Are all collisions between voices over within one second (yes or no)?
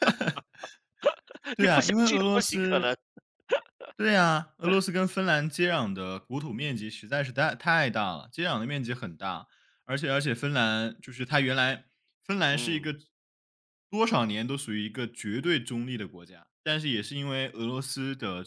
no